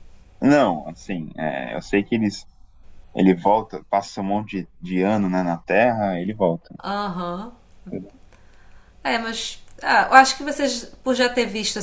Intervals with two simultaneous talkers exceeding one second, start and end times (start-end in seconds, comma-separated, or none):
none